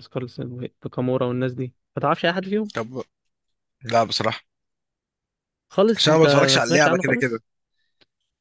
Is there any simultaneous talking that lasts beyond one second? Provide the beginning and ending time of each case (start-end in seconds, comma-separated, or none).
6.0-7.4